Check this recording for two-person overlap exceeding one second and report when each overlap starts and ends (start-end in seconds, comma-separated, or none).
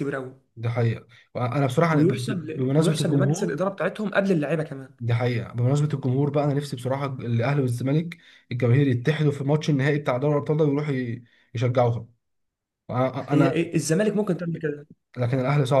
1.9-3.6